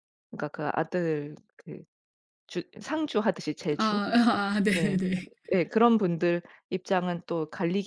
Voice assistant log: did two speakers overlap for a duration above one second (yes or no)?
no